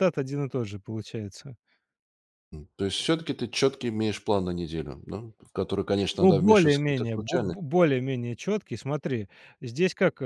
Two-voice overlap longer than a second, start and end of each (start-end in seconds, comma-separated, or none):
6.2-7.6